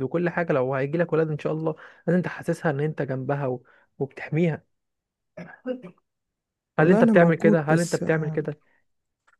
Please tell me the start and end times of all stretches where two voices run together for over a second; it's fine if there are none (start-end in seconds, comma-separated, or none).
6.8-8.5